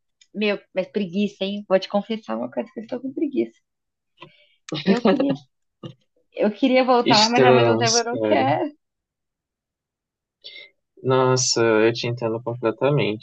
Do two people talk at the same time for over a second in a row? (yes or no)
yes